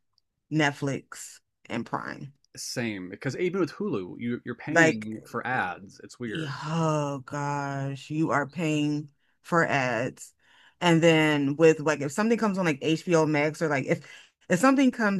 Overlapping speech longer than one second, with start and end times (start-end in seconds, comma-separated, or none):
none